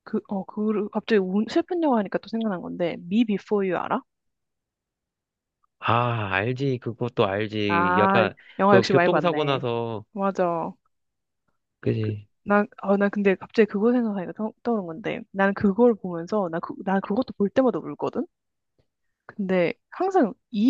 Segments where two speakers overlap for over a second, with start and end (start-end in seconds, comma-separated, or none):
7.7-9.6